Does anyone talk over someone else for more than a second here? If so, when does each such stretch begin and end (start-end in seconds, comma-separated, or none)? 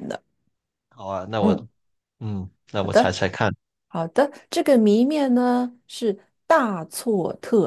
none